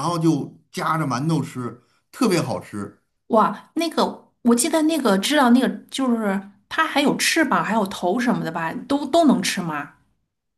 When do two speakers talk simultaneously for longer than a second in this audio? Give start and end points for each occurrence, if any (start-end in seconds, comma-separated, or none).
none